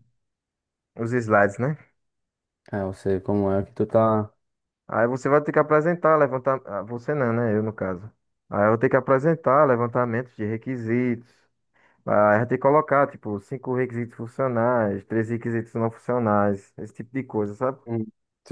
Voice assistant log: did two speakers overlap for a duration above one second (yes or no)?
no